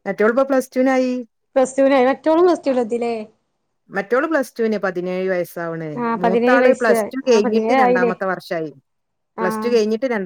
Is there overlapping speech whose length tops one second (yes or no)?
yes